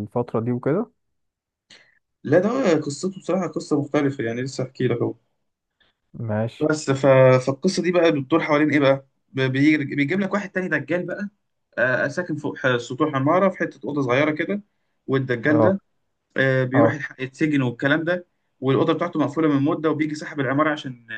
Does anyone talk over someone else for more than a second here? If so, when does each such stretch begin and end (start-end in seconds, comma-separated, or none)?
none